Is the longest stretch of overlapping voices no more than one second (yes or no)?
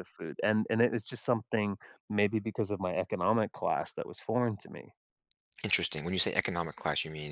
yes